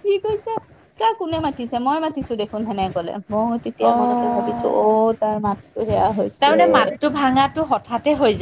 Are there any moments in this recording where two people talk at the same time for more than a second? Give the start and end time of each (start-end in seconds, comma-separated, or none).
none